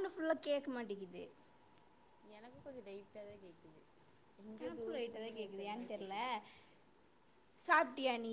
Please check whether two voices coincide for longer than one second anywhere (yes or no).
yes